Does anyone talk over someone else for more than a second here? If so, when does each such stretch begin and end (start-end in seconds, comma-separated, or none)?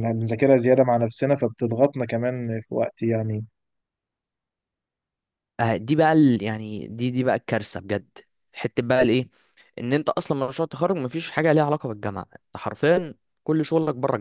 none